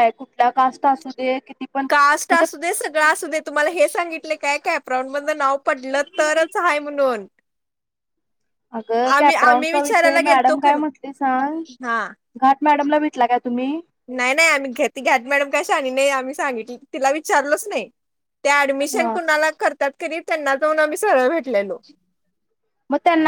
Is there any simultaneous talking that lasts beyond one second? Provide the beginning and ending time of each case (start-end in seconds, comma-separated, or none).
9.2-10.8